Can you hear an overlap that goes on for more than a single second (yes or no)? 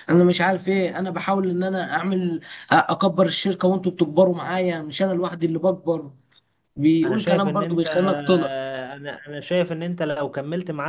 yes